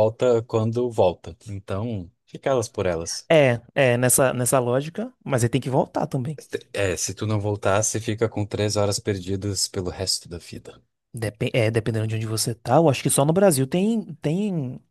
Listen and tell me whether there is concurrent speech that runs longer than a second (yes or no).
no